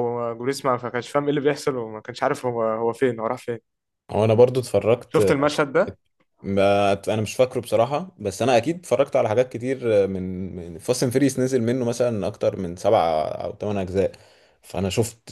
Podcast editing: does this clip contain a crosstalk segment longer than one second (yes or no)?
no